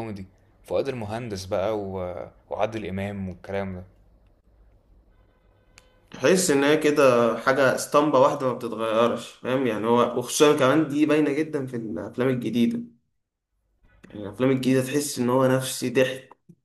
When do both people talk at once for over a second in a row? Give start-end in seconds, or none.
none